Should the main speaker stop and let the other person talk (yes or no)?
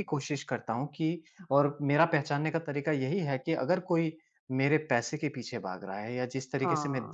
no